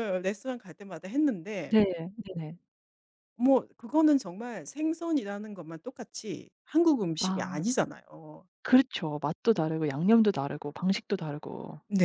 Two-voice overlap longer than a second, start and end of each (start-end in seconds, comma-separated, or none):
none